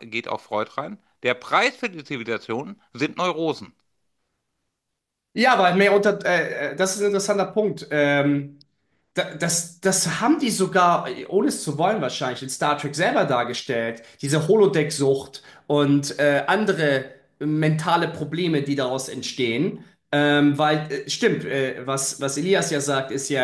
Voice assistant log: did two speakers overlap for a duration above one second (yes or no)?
no